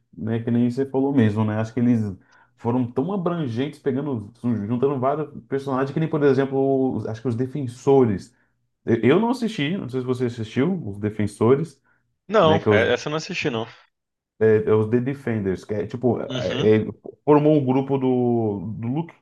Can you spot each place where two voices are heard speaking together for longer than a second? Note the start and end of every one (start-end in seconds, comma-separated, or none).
none